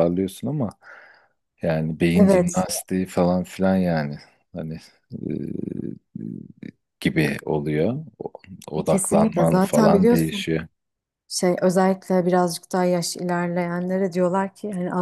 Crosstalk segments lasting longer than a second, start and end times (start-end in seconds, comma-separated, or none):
8.9-10.5